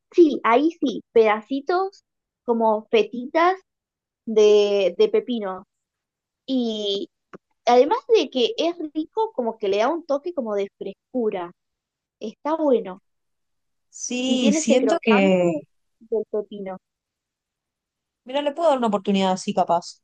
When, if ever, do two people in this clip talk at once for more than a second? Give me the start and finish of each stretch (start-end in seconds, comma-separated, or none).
14.2-15.5